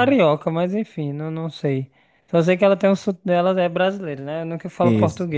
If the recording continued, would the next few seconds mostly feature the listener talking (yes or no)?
no